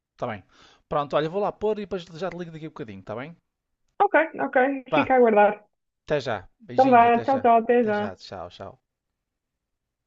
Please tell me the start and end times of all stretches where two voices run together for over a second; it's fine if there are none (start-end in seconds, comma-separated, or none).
6.7-8.2